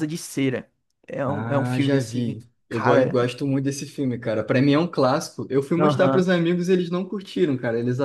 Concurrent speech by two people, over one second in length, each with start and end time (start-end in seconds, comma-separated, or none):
1.2-3.2